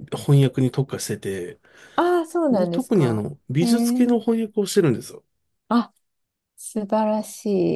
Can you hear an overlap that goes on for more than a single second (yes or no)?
yes